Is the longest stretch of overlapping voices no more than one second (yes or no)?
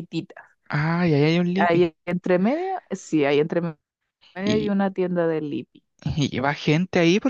yes